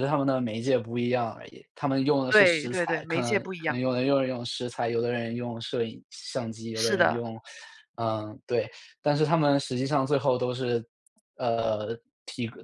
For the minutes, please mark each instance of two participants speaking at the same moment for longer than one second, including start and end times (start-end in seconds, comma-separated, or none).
2.3-3.8